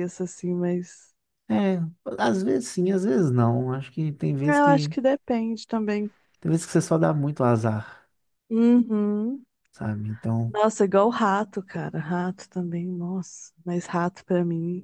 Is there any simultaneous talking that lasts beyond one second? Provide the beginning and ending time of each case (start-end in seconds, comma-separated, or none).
none